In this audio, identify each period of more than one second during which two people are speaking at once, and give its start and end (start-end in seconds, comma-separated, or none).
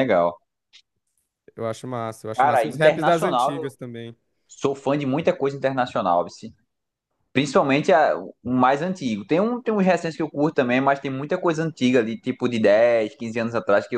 2.4-3.7